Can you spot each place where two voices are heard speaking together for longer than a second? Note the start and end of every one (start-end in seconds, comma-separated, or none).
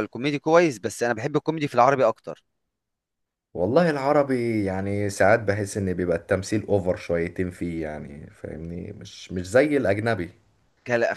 none